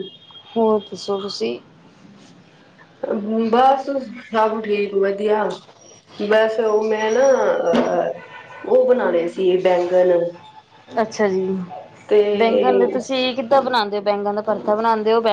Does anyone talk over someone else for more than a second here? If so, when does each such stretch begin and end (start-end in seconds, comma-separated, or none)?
none